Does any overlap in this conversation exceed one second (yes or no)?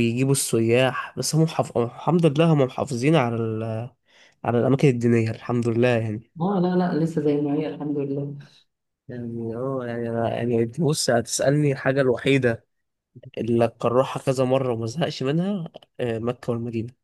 no